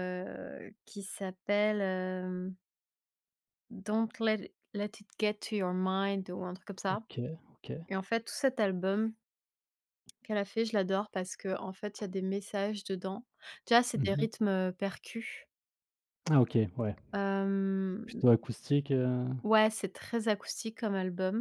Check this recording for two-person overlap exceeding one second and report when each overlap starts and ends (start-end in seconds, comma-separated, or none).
none